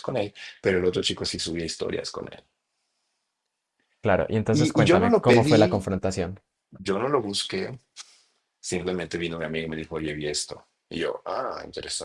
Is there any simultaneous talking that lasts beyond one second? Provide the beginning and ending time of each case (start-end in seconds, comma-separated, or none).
4.5-5.9